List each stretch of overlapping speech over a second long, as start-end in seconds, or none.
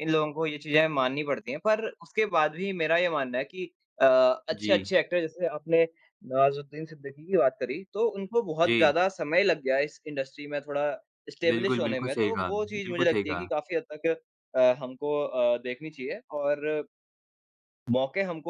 11.5-13.5